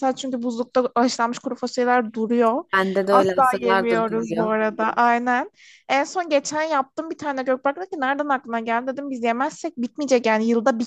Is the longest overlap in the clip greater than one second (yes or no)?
yes